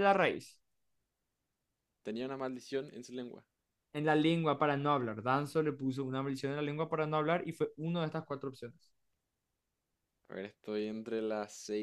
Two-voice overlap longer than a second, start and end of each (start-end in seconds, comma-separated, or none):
none